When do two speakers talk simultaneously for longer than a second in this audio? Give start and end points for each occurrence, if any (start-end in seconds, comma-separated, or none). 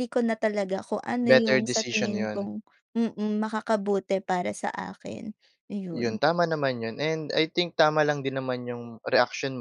1.2-2.5